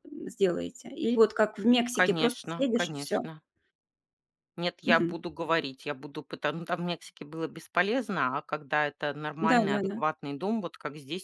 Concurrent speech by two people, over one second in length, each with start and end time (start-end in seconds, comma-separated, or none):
1.9-3.2